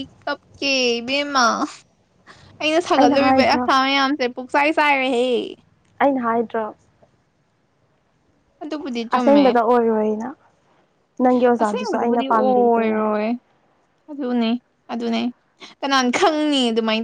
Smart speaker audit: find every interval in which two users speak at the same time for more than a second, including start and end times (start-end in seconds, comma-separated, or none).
11.6-13.1